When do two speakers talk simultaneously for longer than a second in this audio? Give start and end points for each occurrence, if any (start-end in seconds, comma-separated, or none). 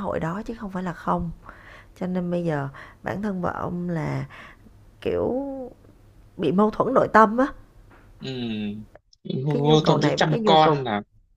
9.5-10.8